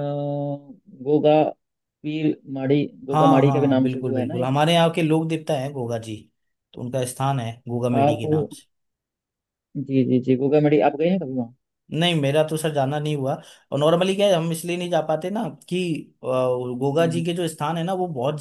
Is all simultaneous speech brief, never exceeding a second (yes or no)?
no